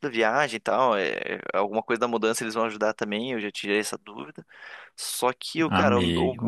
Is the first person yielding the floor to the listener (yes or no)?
no